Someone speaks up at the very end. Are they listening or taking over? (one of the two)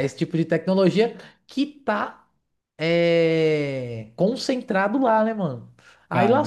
listening